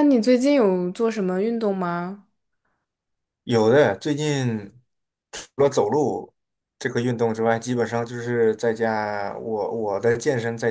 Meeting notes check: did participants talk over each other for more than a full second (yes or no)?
no